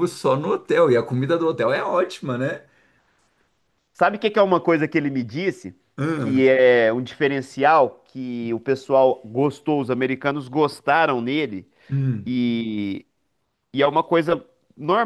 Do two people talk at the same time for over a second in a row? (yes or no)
no